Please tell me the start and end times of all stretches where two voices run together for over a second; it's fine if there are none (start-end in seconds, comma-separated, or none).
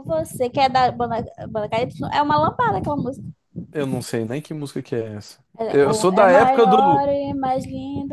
5.6-7.0